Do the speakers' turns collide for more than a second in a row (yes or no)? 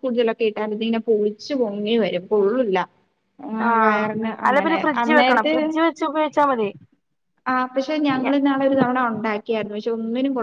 no